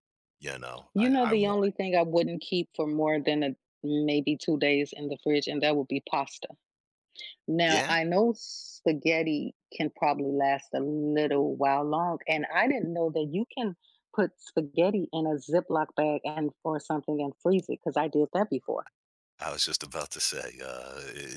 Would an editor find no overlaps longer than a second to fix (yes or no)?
yes